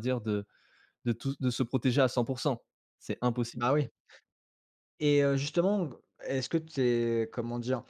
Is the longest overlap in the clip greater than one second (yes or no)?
no